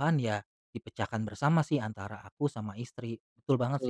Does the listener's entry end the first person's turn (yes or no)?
yes